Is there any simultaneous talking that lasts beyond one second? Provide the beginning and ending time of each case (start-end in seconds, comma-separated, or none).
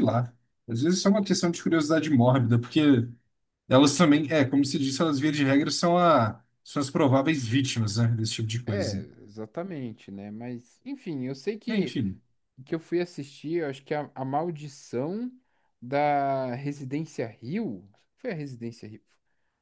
none